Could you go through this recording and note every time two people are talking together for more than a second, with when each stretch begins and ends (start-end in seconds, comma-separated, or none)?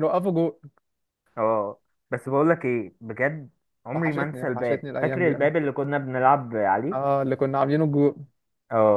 3.9-5.5